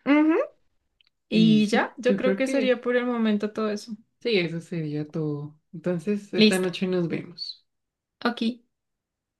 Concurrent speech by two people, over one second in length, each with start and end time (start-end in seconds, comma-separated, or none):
1.3-2.8